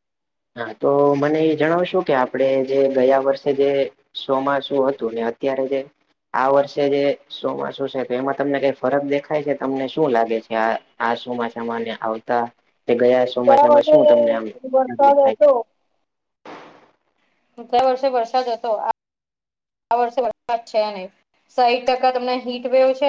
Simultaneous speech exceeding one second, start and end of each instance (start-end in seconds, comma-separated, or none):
13.7-15.3